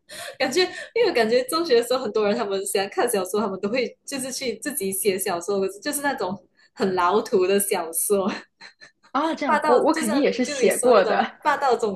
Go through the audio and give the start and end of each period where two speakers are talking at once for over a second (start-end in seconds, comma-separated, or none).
9.4-11.4